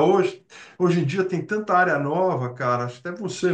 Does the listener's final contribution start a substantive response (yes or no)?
no